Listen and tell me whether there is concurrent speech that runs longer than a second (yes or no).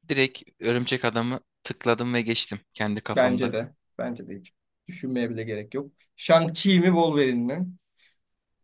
no